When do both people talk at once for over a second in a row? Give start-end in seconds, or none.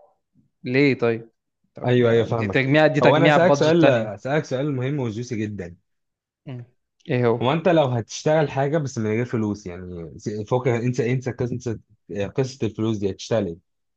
2.3-4.1